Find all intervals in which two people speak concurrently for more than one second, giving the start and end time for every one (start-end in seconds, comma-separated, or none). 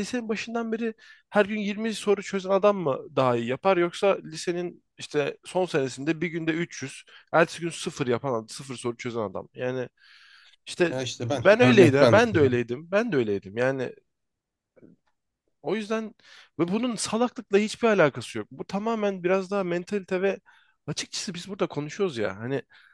10.9-12.5